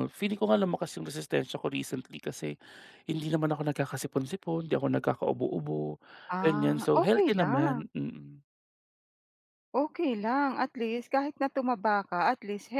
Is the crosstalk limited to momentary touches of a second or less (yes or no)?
no